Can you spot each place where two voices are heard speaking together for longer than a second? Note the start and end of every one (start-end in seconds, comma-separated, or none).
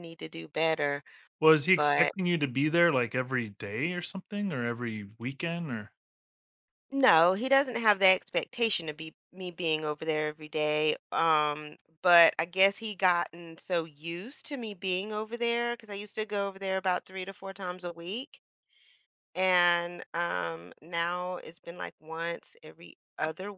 none